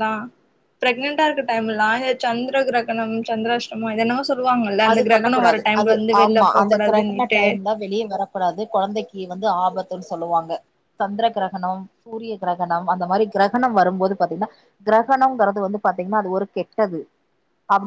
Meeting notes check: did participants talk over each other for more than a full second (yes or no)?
yes